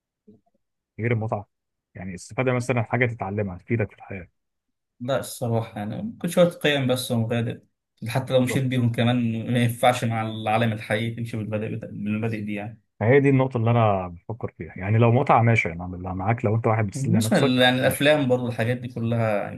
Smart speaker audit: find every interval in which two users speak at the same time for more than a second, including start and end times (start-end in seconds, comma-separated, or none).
16.9-18.1